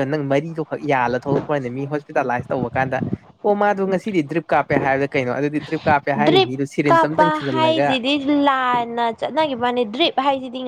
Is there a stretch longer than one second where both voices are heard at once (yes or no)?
yes